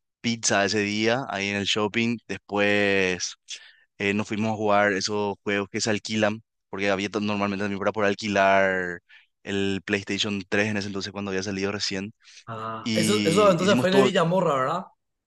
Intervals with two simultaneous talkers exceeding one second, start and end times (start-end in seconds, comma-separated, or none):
12.8-14.1